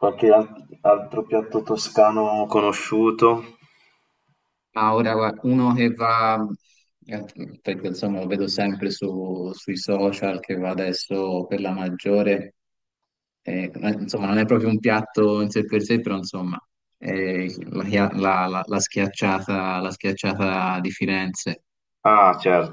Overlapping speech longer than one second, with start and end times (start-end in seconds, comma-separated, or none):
none